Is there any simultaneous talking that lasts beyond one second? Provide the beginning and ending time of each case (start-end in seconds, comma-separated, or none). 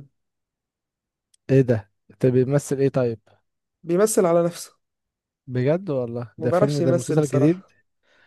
6.4-7.6